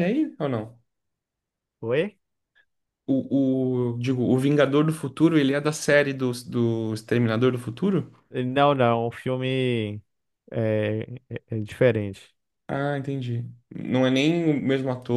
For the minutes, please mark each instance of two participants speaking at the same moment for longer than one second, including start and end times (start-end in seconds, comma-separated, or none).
none